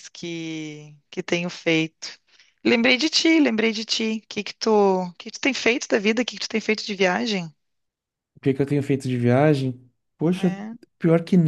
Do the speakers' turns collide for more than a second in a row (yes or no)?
no